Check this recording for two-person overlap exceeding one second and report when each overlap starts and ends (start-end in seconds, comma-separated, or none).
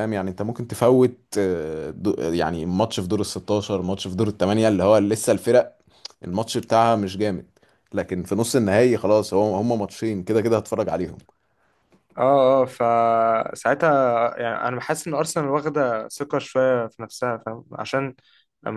none